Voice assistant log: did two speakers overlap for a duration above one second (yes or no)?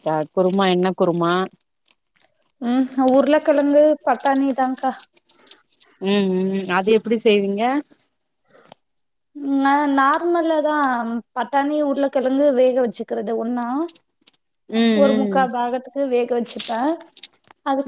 no